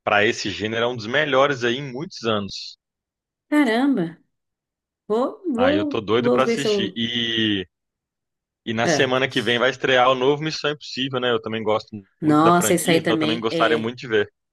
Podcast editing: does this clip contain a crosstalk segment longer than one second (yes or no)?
yes